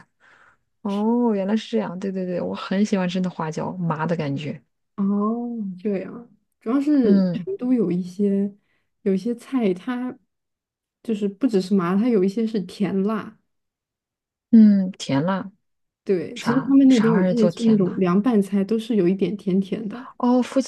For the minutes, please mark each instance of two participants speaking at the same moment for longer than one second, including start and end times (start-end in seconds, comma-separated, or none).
16.4-18.0